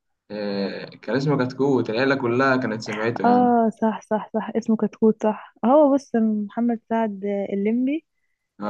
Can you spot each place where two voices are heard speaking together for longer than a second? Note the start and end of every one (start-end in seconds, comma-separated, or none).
none